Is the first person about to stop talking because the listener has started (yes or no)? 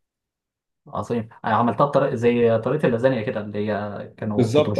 yes